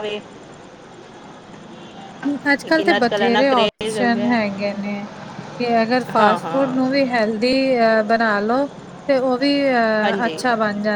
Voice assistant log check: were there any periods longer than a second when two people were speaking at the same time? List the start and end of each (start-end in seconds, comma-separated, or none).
2.6-4.3